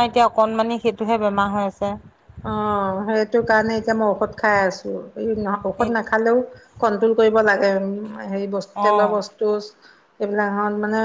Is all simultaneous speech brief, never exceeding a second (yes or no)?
yes